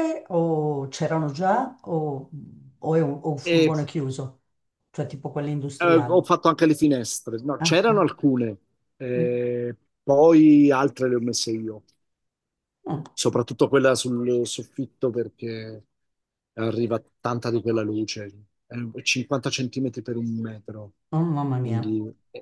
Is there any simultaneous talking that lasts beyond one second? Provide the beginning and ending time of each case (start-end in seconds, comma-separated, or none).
none